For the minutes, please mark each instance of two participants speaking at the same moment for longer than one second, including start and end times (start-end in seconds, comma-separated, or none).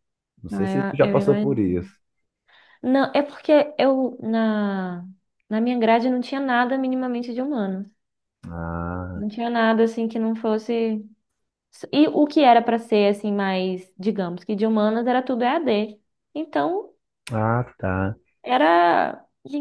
0.5-1.8